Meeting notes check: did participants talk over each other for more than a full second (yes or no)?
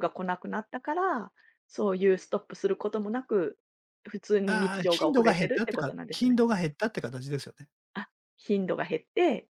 yes